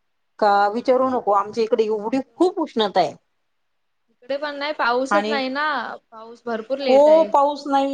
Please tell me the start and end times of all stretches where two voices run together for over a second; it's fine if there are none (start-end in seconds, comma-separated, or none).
none